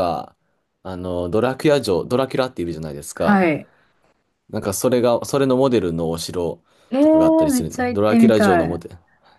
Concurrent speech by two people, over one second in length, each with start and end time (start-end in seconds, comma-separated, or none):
7.0-8.8